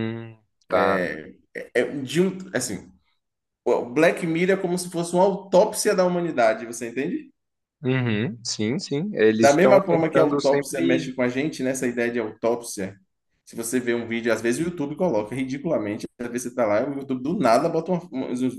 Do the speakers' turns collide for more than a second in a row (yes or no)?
yes